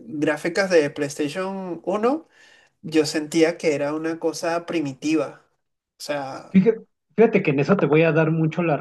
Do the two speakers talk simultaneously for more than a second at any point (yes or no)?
no